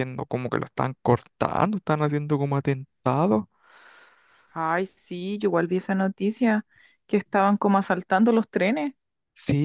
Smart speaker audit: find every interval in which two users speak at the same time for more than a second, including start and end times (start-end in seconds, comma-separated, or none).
none